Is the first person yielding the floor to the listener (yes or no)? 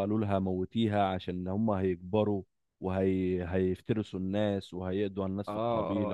yes